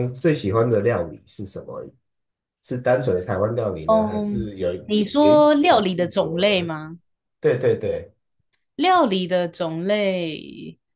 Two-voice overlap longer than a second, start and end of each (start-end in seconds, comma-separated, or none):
3.9-6.7